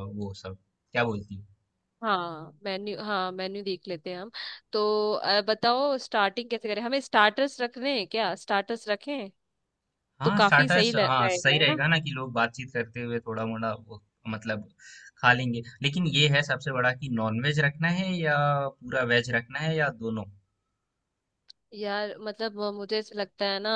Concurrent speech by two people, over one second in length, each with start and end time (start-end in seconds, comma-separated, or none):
10.2-11.8